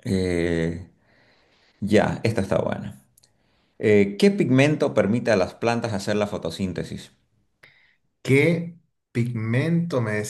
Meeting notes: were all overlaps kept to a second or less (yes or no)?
yes